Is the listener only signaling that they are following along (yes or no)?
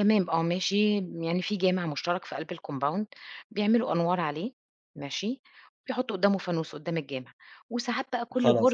yes